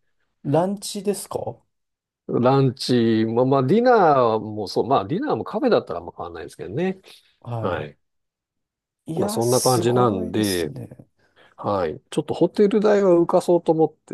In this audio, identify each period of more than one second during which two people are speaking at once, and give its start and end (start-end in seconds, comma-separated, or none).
9.2-10.7